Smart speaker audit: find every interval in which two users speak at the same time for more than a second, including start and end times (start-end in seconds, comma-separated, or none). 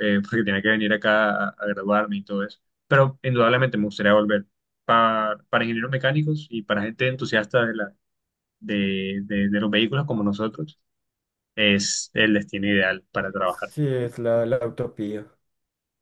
none